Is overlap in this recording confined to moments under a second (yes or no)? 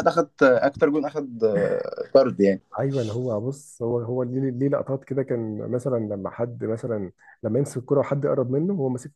yes